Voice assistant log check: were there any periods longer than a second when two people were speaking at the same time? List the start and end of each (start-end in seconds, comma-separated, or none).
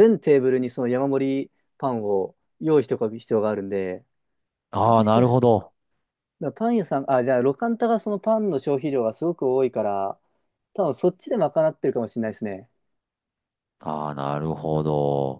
none